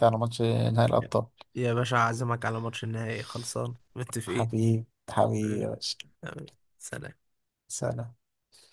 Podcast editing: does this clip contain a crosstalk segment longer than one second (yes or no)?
no